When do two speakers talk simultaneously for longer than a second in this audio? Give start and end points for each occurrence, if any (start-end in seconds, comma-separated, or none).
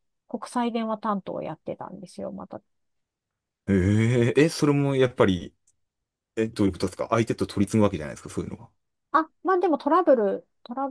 none